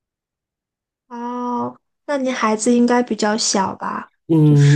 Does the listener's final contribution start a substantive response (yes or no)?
yes